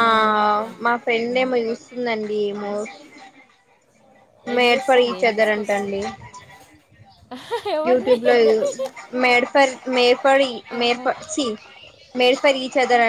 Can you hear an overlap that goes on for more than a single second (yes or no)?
yes